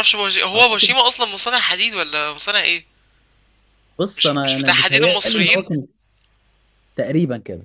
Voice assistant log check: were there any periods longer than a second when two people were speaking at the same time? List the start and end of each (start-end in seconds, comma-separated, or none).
4.2-5.7